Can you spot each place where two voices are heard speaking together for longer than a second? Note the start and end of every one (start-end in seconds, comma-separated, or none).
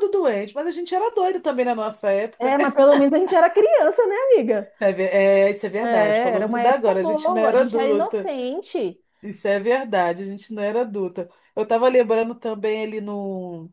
5.8-8.3